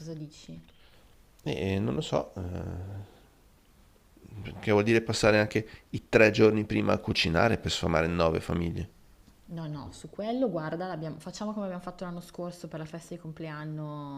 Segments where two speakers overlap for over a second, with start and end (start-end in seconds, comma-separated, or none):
none